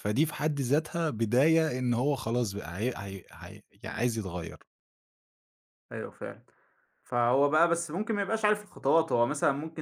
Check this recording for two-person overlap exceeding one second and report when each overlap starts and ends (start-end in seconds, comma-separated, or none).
none